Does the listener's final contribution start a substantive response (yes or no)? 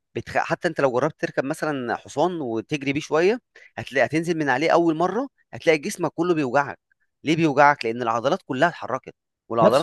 yes